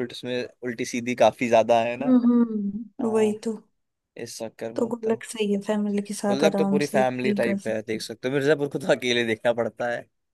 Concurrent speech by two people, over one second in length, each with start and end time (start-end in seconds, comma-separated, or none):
6.3-8.0